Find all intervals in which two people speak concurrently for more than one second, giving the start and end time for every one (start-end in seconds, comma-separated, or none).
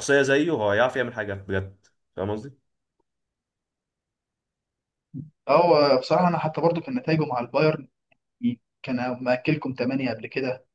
none